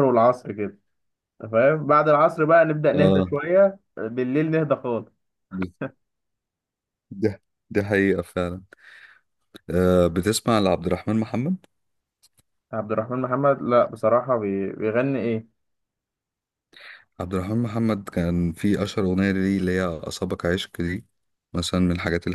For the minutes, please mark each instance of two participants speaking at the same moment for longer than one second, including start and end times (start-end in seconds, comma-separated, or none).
none